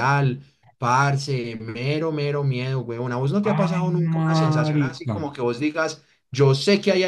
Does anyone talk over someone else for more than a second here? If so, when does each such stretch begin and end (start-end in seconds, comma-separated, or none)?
3.5-5.2